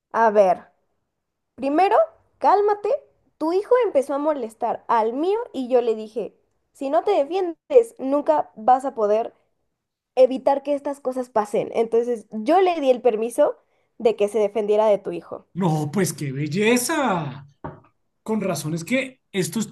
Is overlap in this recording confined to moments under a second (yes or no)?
yes